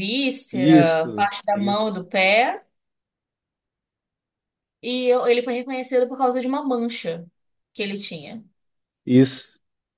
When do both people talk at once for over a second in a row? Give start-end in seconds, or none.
0.5-2.0